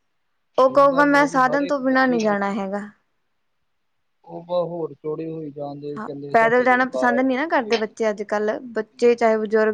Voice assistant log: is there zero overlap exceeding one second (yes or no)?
no